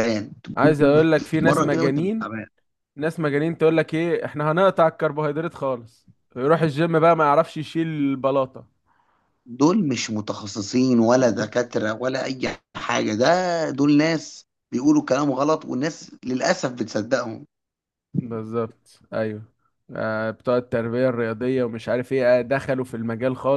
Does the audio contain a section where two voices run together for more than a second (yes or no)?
yes